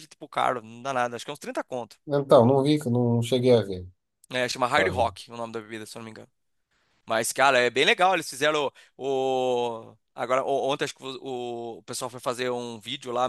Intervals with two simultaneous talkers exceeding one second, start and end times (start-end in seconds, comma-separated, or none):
none